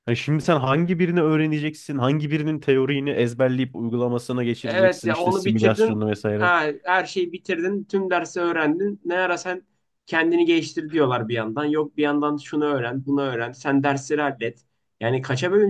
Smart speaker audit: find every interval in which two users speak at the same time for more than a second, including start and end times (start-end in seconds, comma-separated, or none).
4.6-6.5